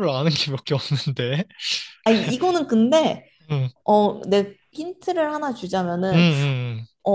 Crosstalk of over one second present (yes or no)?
no